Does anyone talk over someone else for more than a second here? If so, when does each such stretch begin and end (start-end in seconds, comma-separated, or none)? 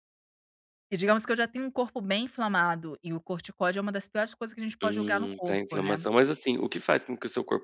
4.8-6.0